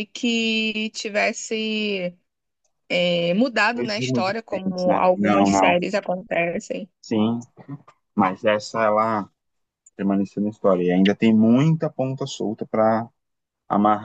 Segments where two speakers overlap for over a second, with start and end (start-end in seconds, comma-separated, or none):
3.8-5.8